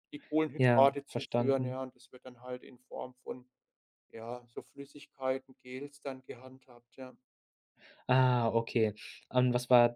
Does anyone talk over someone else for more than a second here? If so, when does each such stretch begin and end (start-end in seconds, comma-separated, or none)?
0.6-1.8